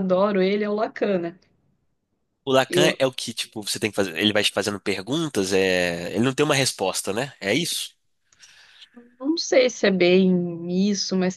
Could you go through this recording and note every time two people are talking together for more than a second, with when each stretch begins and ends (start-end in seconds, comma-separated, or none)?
none